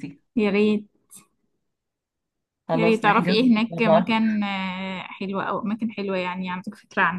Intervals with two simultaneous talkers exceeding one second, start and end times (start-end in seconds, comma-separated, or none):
2.7-4.2